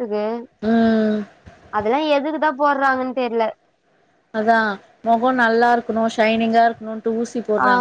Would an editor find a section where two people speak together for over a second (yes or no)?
no